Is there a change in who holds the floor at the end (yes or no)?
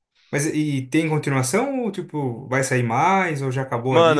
yes